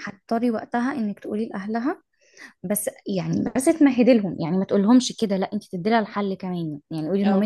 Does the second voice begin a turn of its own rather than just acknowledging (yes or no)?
no